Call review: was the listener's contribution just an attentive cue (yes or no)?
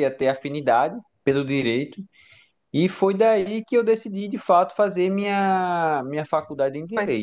no